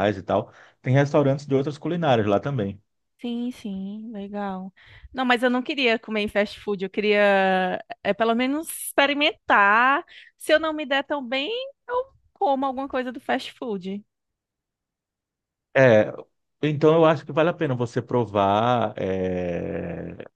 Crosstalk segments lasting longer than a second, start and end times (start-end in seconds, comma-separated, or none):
none